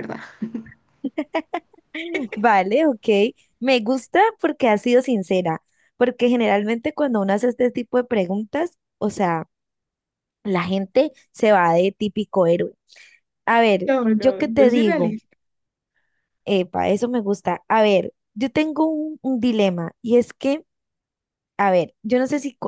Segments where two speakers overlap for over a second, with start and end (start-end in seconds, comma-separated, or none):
13.8-15.2